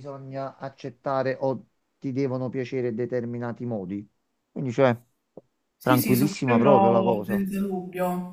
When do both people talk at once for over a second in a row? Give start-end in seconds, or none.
5.8-7.5